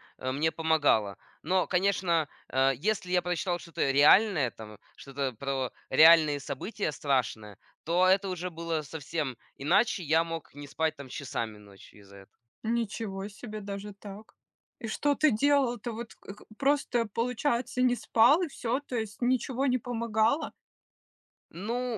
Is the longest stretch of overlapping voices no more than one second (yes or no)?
yes